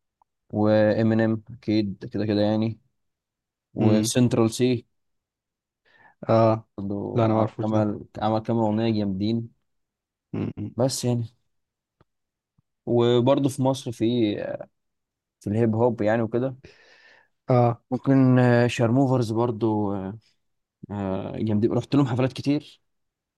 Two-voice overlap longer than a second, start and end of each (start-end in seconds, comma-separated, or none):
none